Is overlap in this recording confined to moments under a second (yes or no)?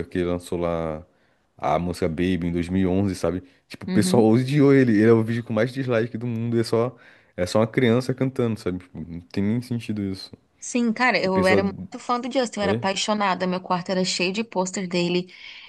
yes